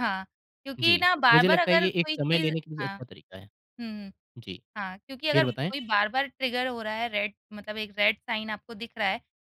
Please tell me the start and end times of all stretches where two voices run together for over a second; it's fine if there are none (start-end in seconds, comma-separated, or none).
0.8-3.0